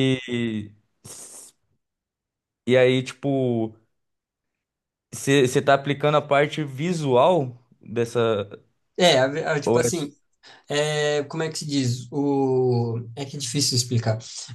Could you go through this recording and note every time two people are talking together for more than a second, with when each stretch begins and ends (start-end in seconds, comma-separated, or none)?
none